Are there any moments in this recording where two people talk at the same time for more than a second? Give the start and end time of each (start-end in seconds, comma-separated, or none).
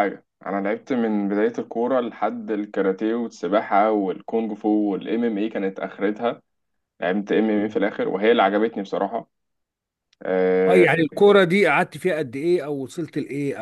none